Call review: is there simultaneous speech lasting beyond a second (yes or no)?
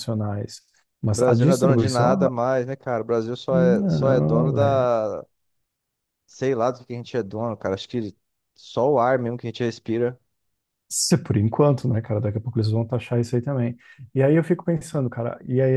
yes